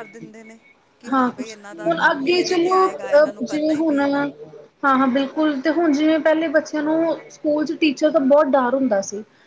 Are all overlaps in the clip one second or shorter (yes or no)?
no